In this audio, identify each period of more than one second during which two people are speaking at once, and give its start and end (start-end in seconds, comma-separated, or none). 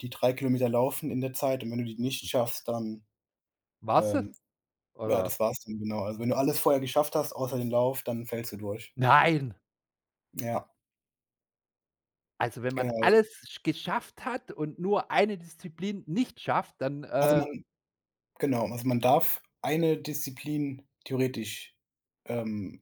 none